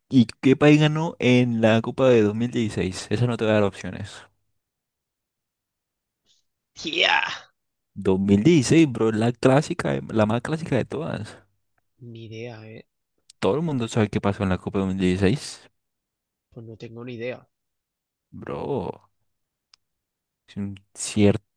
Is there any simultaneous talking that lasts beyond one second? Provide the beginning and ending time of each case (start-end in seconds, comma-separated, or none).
none